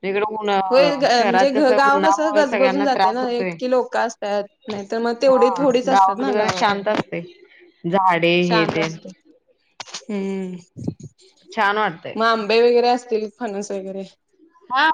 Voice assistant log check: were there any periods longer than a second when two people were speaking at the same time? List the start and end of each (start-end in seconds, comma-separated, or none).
1.1-3.5